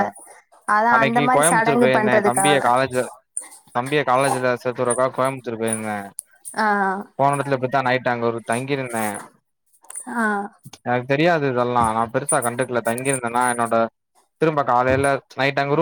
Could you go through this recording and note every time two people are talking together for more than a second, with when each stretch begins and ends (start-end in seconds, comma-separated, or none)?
0.9-2.6